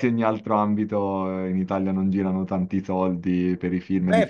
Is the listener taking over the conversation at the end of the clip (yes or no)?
yes